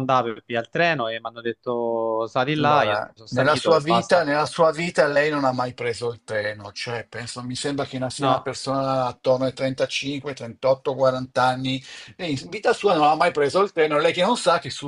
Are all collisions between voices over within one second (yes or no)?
no